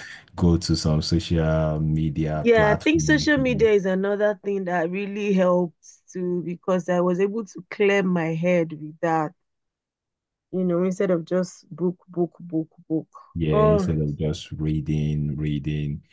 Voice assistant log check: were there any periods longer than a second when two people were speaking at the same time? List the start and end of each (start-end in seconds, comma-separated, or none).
2.4-3.7